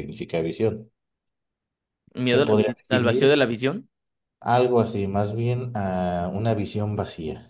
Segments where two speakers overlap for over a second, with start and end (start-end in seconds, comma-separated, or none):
2.2-3.4